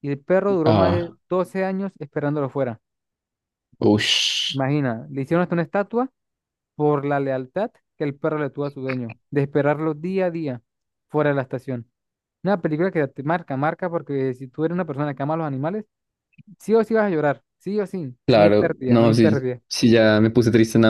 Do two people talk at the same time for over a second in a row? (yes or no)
yes